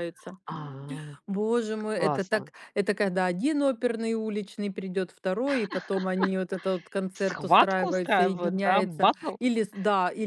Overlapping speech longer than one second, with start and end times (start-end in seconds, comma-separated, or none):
7.1-9.3